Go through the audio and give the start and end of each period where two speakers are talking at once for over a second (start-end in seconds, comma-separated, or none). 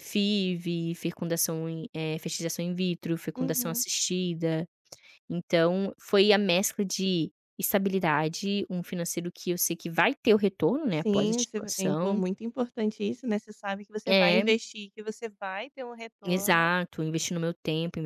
10.9-12.2